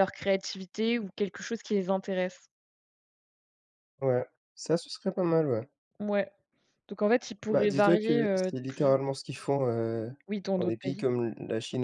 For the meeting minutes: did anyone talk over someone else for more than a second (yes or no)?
yes